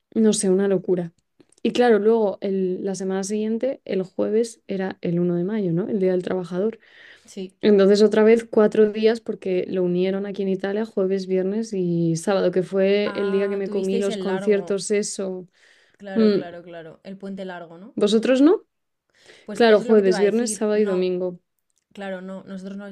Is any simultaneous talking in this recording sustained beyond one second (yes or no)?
yes